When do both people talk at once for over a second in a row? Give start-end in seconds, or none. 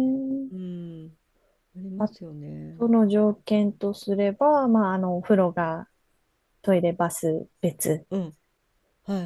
none